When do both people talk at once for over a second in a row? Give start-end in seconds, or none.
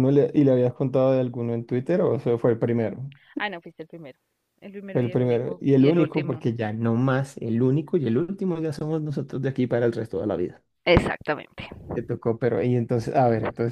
4.9-6.5